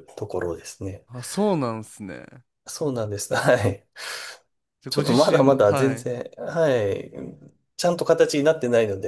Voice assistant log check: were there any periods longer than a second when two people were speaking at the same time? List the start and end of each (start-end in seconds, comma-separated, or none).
4.9-6.1